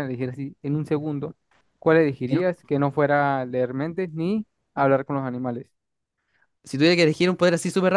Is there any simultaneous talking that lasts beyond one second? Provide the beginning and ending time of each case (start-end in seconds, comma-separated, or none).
none